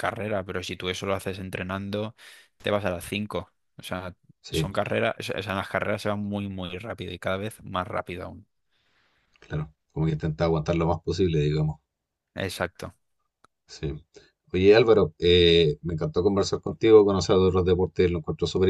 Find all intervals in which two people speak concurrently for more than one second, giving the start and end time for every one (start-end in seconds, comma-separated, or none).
none